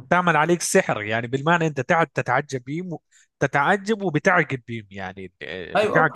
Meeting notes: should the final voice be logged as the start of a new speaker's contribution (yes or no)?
yes